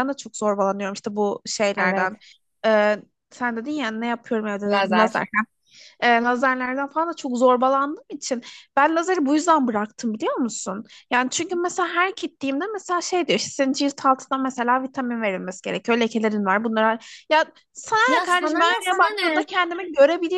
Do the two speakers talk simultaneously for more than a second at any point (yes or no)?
yes